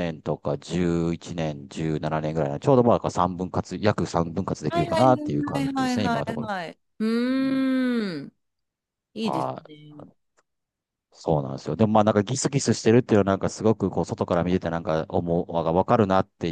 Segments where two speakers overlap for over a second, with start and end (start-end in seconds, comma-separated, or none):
4.7-6.5